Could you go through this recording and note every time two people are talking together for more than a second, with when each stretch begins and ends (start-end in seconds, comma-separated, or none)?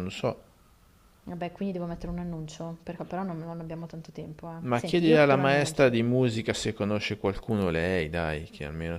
4.6-5.9